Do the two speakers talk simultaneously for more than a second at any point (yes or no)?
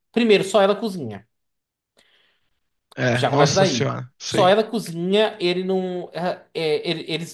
yes